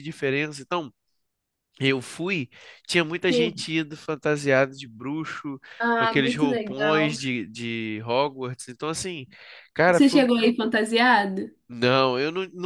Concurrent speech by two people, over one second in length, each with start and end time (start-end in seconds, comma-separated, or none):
5.8-7.1